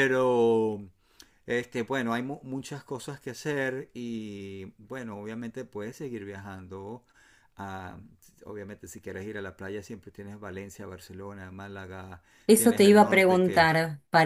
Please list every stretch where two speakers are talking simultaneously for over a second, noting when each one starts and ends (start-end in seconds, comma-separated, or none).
12.4-13.7